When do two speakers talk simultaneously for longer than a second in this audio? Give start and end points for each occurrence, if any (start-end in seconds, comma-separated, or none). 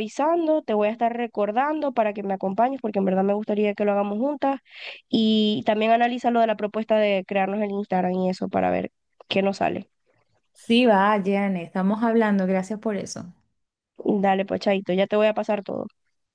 none